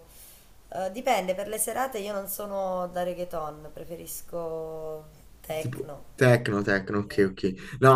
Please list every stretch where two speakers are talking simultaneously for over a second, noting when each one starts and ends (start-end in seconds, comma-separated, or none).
none